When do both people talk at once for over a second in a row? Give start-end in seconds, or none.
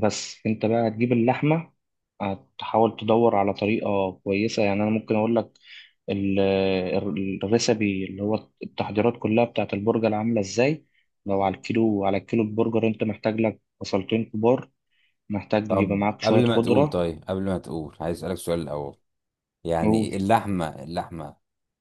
15.7-17.0